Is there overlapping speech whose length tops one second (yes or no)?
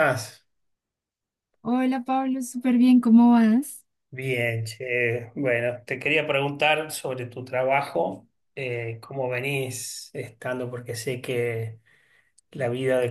no